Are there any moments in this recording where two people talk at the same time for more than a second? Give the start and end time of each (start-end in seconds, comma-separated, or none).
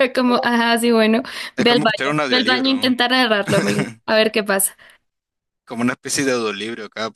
1.6-2.9